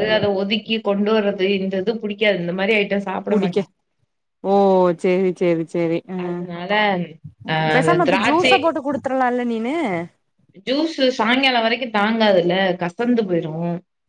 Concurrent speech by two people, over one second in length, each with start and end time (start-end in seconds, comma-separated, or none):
none